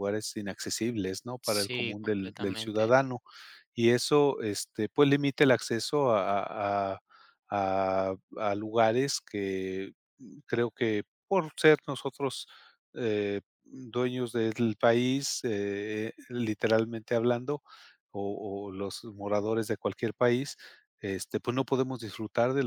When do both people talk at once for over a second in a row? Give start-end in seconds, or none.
1.4-2.9